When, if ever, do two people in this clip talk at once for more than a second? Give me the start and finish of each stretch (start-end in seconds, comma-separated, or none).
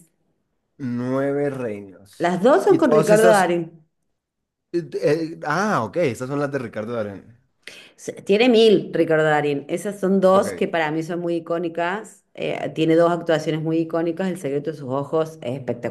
2.2-3.5